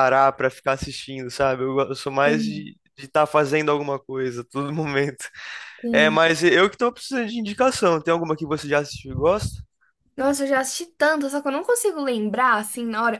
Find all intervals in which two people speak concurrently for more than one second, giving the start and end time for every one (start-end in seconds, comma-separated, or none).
none